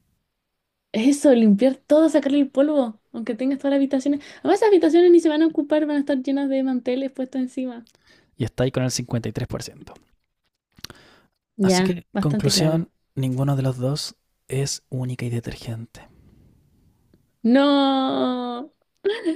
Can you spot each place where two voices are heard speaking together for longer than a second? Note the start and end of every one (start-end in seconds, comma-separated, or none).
11.6-12.9